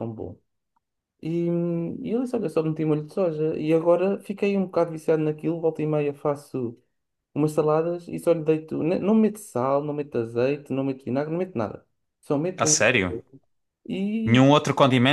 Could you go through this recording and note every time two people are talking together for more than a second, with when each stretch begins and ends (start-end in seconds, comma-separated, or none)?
none